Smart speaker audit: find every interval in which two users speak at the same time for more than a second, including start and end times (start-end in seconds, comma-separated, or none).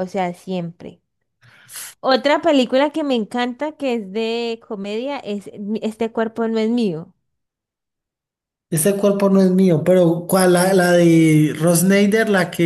none